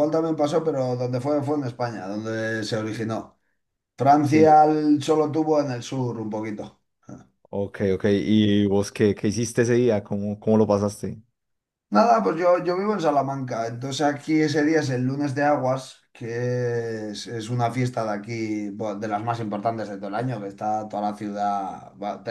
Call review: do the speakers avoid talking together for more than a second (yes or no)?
yes